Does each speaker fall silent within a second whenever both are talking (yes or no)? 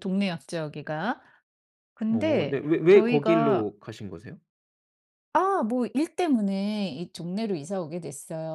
no